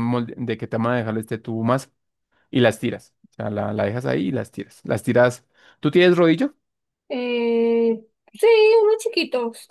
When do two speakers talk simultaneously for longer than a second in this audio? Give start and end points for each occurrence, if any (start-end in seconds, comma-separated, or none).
none